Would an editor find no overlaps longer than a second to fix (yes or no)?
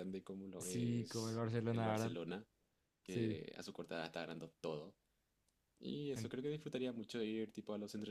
no